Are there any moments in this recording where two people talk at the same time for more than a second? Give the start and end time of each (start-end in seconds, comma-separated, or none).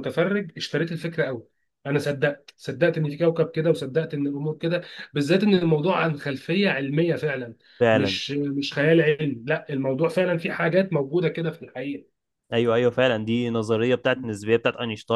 none